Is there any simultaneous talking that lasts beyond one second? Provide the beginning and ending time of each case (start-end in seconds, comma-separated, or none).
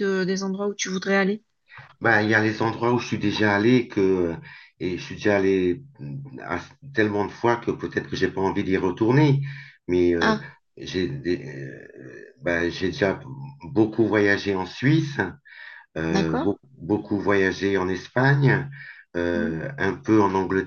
none